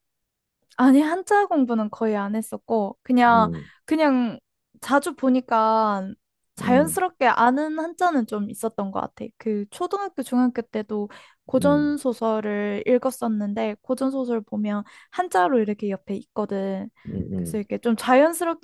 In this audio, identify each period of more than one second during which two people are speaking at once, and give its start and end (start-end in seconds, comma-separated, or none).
none